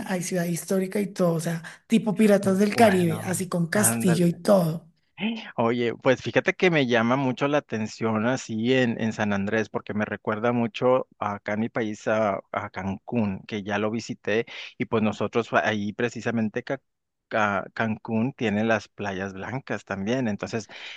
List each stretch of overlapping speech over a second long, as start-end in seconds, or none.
2.4-4.4